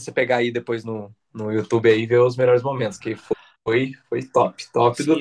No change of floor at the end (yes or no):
no